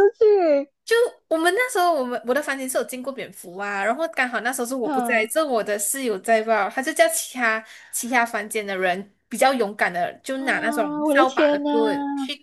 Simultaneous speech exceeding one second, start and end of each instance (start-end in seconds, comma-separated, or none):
10.4-11.7